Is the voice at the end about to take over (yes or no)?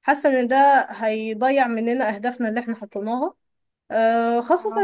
no